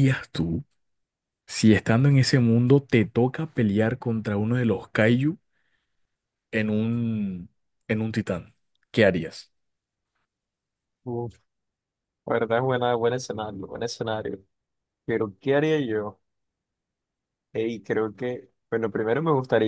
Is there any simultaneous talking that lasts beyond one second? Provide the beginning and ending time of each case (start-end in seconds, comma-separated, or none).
none